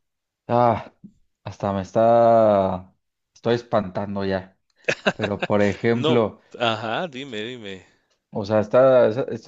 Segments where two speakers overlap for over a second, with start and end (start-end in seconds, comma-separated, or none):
none